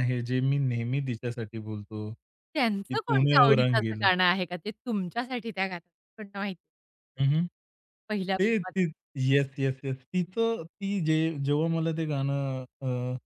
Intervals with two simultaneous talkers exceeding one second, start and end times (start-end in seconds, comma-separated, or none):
2.5-4.0